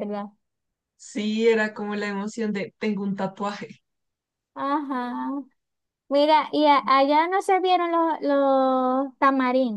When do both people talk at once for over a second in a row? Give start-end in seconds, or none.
none